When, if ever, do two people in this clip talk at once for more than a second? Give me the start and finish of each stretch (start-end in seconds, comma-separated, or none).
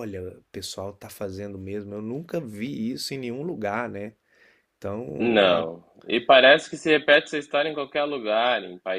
none